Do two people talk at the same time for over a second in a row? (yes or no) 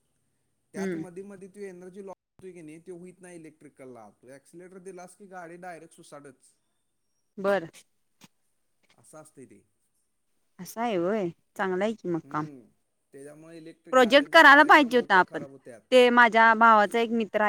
yes